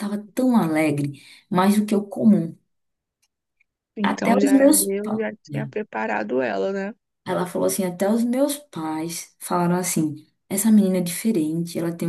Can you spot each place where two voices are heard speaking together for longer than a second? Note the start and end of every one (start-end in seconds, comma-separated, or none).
4.0-5.7